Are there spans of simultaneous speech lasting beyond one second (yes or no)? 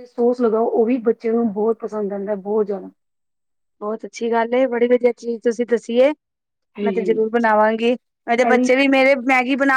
no